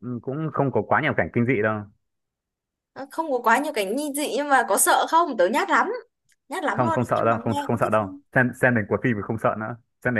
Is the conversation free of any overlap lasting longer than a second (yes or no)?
no